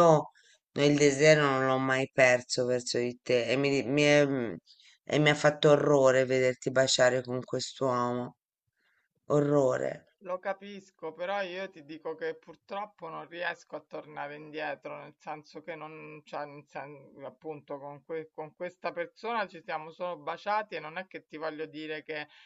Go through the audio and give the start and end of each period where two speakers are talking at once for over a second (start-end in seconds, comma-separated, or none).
none